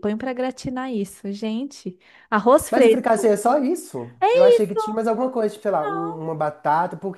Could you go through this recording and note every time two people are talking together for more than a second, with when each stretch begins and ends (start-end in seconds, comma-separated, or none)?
none